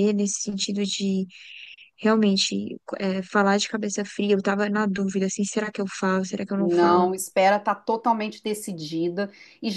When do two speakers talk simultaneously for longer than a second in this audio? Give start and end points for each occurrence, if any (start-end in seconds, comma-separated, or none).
none